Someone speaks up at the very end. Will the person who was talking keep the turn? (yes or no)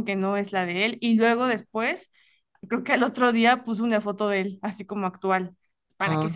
yes